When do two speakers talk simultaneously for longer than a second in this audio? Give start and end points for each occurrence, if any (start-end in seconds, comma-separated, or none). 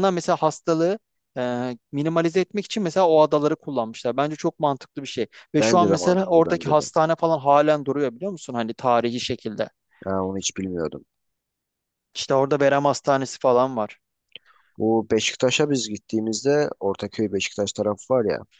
5.6-6.9